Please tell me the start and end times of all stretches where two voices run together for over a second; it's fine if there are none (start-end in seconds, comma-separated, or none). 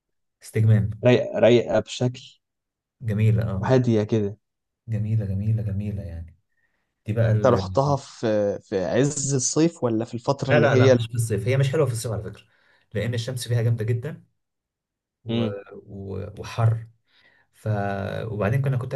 none